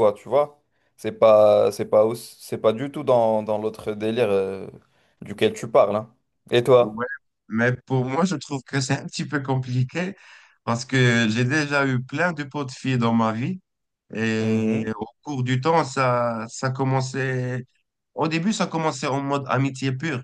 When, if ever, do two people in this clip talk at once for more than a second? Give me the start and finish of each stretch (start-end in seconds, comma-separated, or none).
none